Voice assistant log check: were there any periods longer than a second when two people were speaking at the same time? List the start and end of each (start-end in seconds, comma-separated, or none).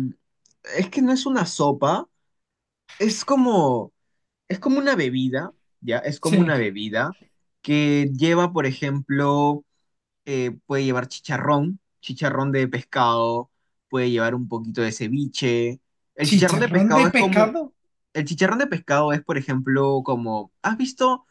16.2-17.6